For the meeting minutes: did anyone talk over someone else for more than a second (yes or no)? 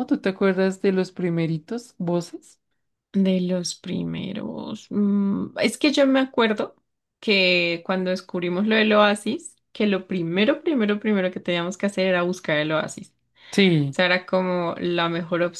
no